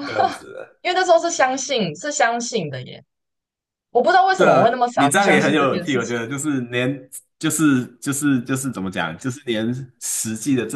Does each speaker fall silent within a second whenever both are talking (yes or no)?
no